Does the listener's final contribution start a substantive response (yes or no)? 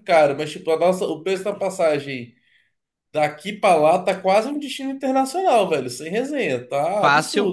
yes